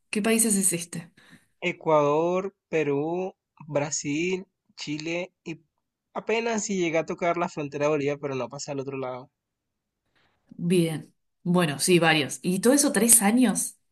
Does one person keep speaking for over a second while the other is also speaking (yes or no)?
no